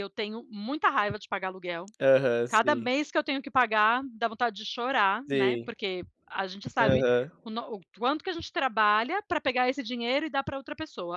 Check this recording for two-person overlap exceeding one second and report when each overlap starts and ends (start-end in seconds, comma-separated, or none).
none